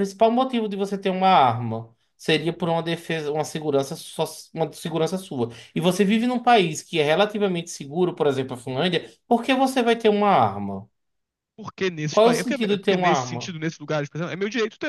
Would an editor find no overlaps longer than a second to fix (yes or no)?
no